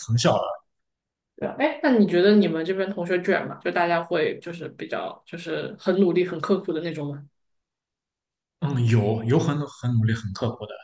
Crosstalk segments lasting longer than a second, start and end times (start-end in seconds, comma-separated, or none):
none